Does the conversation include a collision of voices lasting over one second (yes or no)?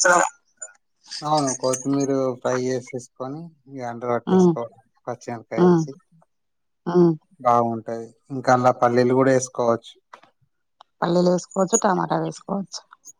no